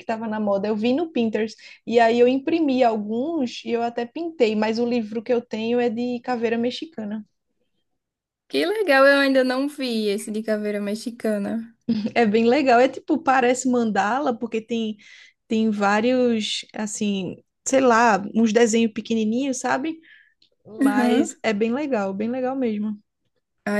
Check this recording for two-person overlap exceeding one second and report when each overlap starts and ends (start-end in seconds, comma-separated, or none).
none